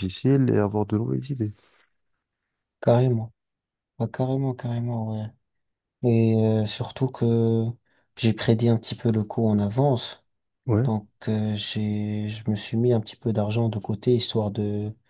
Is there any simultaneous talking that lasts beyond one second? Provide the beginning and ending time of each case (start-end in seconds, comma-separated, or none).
none